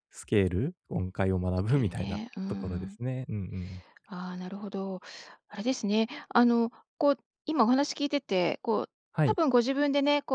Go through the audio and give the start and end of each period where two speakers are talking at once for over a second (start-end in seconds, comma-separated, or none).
1.6-3.0